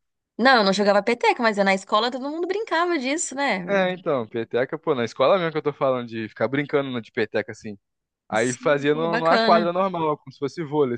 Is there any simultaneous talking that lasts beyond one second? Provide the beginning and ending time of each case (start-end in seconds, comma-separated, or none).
8.3-9.7